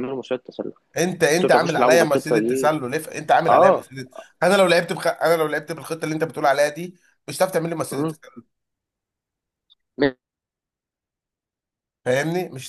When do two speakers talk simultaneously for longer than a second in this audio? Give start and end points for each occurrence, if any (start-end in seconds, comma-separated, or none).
1.4-2.7